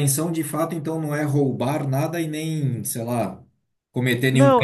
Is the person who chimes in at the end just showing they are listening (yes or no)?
no